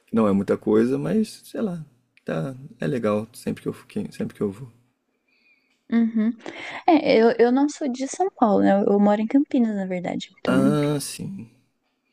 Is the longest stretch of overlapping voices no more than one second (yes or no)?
yes